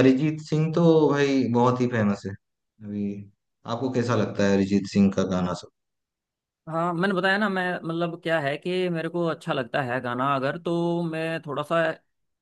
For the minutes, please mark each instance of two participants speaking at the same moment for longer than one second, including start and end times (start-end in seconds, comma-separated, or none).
none